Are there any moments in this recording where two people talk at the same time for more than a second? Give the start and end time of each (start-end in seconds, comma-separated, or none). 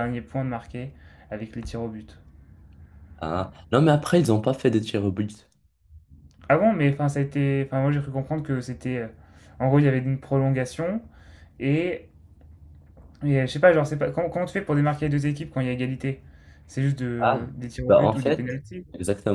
17.2-18.9